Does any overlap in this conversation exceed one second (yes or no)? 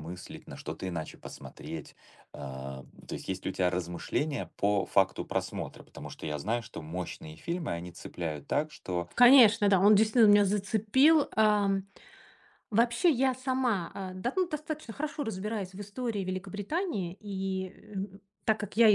no